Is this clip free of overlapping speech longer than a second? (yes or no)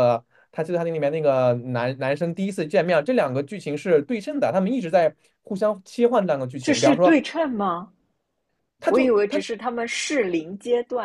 yes